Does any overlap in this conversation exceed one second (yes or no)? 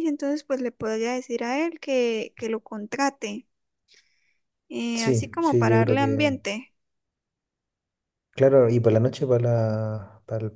yes